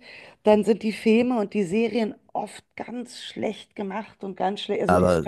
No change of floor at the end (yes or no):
yes